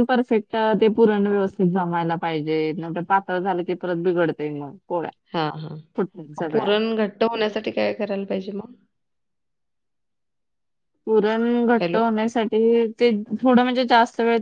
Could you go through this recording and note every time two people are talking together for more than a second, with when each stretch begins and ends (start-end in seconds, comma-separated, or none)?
none